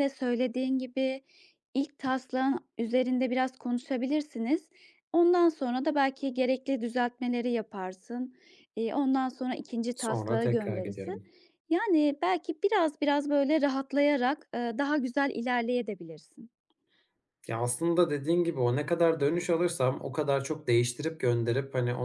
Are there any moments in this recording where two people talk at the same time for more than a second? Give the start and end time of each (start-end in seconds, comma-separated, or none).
9.9-11.2